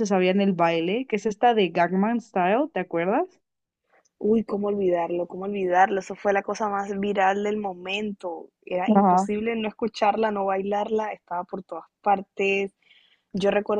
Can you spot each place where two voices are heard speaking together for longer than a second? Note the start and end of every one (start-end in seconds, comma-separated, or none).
none